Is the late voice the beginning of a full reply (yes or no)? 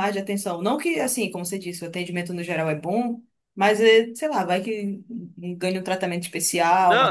yes